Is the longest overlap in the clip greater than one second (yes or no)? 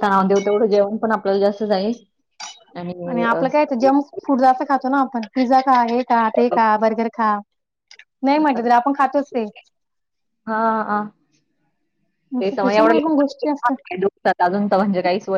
yes